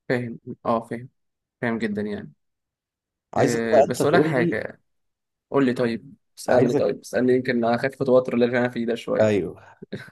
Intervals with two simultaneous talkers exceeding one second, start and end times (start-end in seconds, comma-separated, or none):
3.4-4.6